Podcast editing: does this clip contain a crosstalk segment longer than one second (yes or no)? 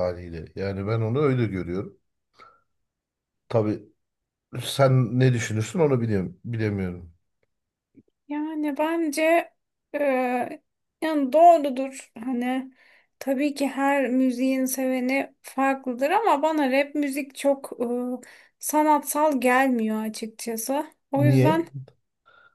no